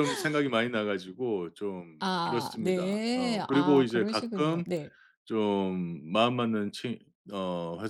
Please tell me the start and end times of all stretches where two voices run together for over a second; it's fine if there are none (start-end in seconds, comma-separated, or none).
2.0-4.7